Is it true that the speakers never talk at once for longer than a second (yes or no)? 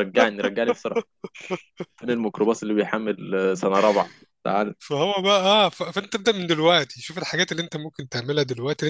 yes